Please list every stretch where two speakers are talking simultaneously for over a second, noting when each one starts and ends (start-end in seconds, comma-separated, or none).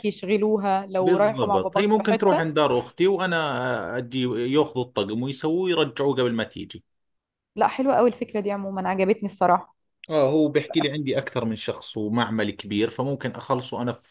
1.0-2.5